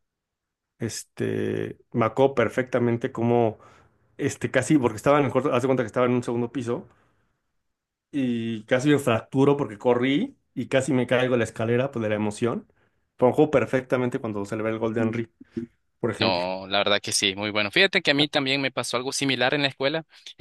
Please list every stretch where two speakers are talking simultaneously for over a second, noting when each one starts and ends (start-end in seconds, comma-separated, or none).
none